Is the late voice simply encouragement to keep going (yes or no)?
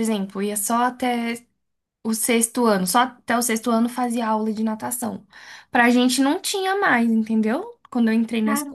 yes